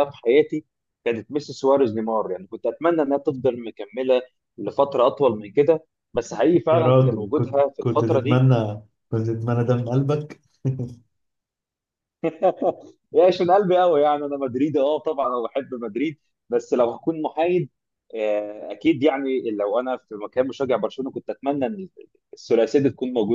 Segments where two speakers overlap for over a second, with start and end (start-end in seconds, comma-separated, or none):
6.7-8.5